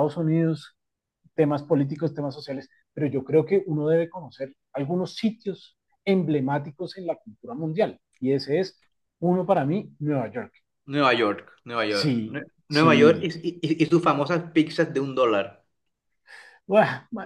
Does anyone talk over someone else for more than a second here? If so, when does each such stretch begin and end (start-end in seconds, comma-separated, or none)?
11.9-13.3